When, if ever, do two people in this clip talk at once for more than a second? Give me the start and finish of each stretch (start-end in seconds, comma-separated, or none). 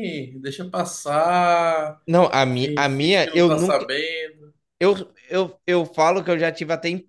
2.5-3.9